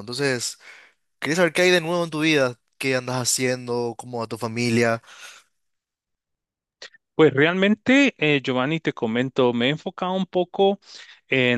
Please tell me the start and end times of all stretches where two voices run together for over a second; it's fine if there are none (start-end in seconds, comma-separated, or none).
none